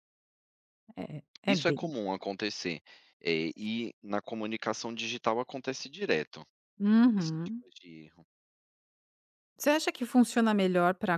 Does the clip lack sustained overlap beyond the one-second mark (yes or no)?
yes